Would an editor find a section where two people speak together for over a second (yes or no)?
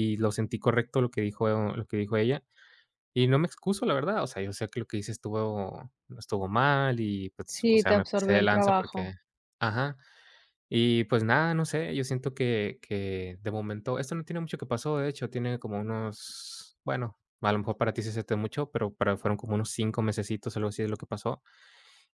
yes